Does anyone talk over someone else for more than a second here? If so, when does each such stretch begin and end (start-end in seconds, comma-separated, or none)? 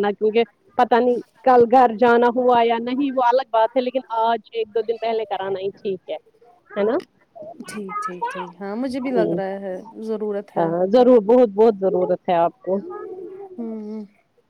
none